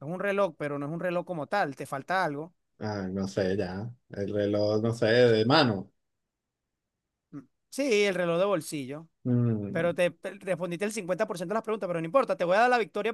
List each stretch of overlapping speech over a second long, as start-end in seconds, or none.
none